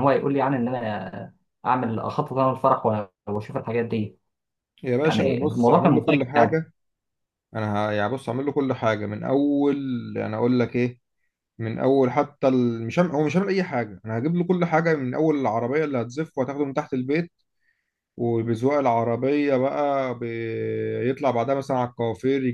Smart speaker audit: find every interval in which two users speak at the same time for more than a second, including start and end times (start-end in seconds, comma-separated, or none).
5.0-6.6